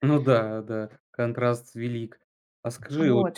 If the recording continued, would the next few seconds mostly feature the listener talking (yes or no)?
no